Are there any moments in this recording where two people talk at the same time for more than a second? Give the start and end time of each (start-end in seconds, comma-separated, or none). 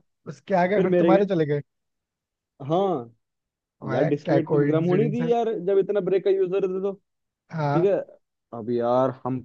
3.9-5.3